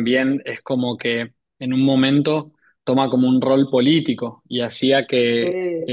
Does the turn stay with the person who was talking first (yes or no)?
yes